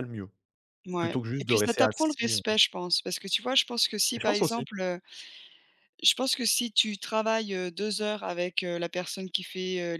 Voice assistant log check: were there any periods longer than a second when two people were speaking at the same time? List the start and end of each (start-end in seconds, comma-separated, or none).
1.0-2.4